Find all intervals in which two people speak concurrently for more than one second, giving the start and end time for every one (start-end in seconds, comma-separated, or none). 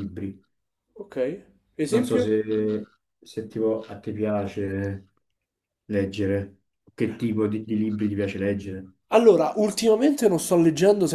none